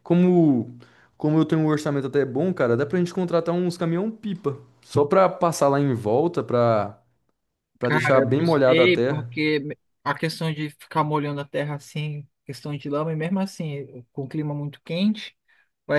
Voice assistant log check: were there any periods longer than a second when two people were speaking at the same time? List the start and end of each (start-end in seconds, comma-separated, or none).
7.8-9.3